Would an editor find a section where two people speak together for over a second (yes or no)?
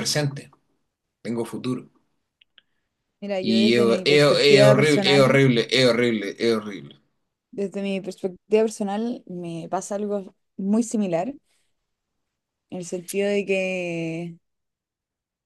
yes